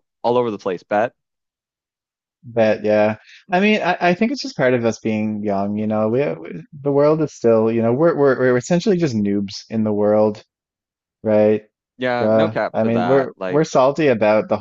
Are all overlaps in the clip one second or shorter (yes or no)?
no